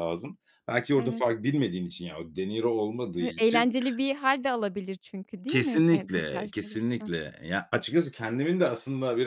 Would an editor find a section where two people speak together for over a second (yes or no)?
yes